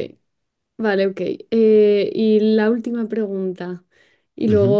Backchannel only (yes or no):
yes